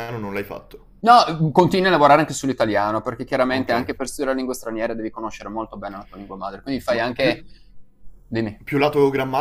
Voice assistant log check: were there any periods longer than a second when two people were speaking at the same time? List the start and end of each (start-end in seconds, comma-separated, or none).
none